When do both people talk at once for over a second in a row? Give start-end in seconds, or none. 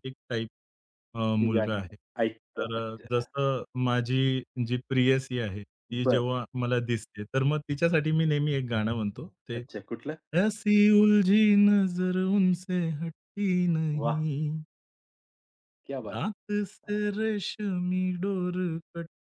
none